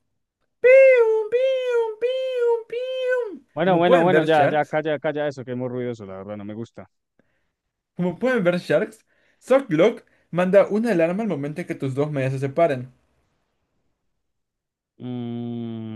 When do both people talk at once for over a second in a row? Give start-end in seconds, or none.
3.5-4.8